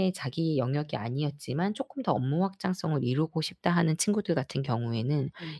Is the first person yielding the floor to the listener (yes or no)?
no